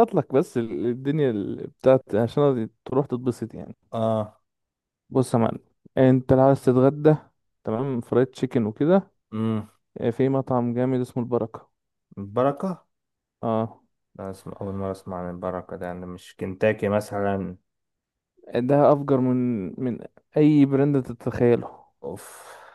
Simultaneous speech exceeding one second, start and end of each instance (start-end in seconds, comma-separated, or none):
none